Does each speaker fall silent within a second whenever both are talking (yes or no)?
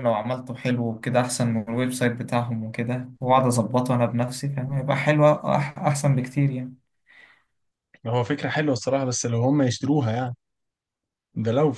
yes